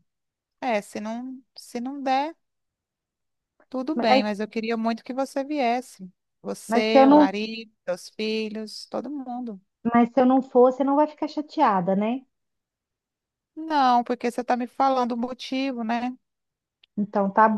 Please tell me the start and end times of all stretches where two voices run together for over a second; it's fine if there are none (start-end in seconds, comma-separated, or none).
none